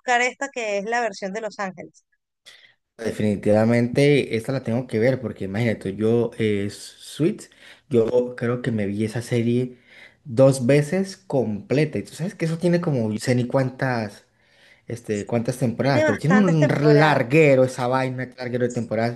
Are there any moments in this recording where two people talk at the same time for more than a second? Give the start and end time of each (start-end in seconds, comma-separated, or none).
15.8-17.2